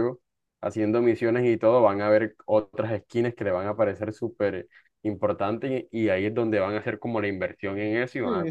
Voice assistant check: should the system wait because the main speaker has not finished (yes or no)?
no